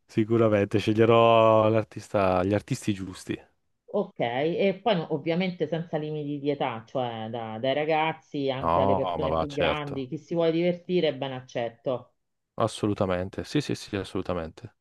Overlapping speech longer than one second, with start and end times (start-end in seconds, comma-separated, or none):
8.6-10.1